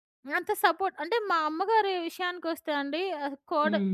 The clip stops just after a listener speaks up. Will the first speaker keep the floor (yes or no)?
yes